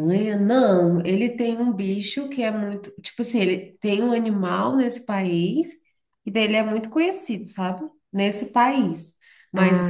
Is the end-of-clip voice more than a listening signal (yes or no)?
no